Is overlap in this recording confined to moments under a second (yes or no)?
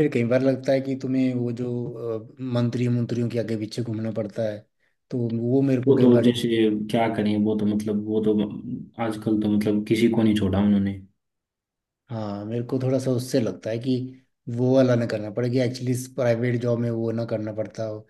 yes